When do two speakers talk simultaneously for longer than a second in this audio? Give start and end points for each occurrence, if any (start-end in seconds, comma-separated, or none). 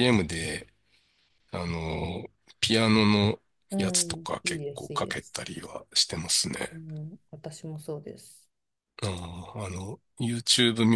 3.8-5.4